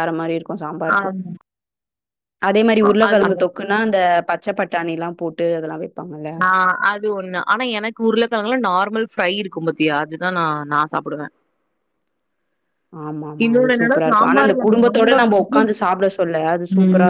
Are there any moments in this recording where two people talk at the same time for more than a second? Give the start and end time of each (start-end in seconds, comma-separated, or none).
13.4-15.5